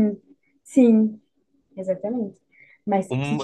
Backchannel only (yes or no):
no